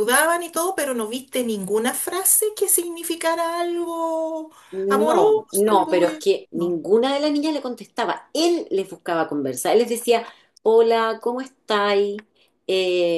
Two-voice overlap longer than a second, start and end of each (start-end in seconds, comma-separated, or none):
4.9-6.8